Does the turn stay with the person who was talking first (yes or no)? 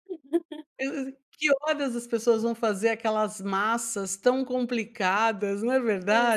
no